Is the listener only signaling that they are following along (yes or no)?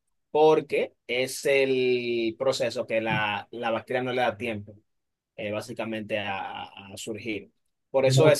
yes